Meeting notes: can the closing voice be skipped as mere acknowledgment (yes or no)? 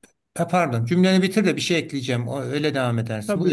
no